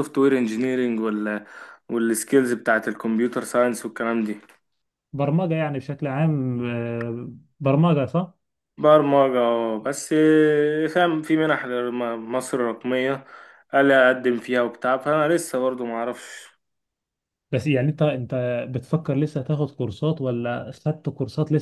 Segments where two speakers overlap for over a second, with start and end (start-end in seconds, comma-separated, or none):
none